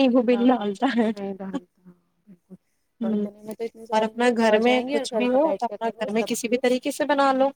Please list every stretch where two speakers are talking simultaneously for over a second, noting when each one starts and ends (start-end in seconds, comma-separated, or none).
3.9-6.6